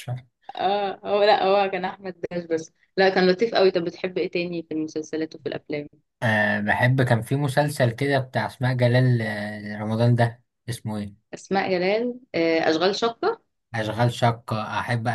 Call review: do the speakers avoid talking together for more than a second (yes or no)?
yes